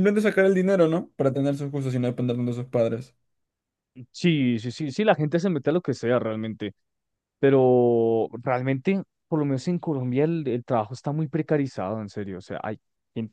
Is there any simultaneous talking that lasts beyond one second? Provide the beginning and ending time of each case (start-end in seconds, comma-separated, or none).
none